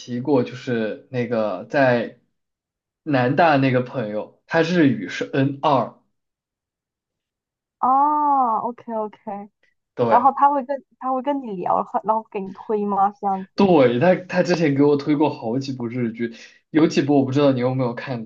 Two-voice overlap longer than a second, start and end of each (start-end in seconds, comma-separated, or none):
none